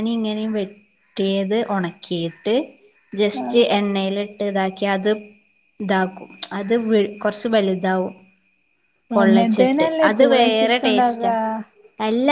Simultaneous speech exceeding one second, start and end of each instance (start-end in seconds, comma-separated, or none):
9.2-11.3